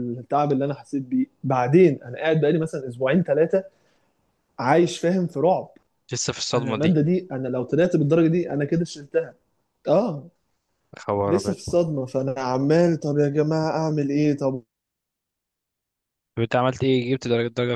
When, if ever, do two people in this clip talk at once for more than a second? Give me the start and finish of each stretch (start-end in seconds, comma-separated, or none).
none